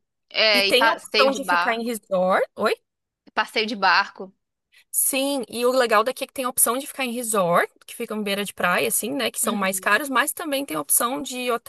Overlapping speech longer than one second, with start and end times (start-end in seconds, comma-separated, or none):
0.5-1.9